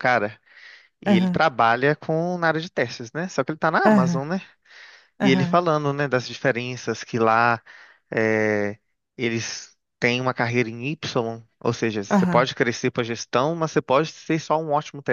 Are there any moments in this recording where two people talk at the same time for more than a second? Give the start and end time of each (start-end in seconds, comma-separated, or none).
none